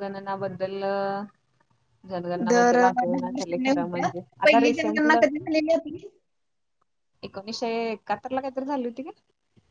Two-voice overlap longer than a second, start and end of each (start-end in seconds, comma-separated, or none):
2.5-5.2